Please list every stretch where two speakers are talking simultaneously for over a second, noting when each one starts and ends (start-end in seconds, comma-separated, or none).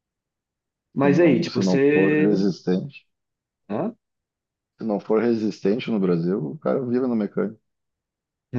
1.0-2.3